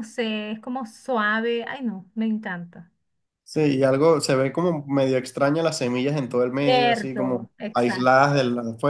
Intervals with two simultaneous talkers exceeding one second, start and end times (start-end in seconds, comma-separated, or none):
6.6-8.2